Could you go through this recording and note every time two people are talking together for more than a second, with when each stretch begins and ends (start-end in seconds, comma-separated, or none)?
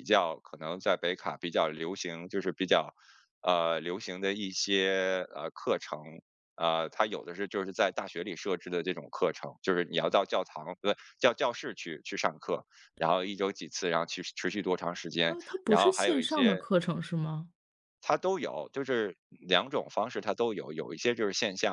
15.3-16.6